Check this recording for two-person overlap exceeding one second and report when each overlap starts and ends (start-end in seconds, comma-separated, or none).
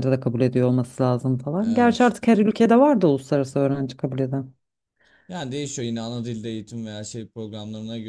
none